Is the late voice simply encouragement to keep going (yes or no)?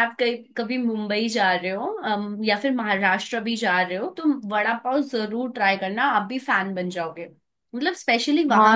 no